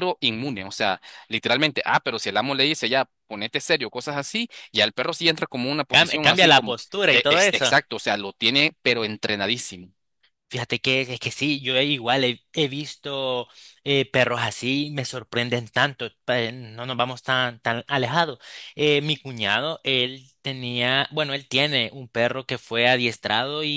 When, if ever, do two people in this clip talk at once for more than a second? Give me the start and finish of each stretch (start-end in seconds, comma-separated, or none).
5.9-7.7